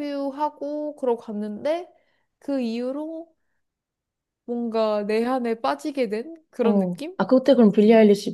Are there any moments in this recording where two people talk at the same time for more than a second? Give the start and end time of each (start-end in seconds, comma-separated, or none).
none